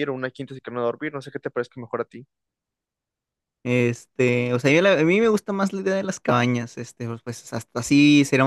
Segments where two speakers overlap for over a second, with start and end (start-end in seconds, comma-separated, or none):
none